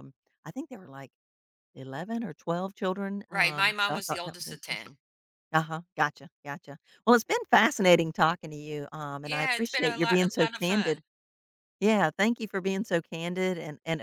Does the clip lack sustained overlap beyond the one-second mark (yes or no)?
no